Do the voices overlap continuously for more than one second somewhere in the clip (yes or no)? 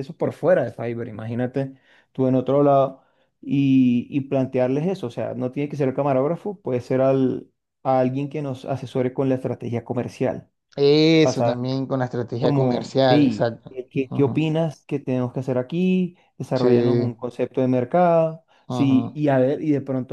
yes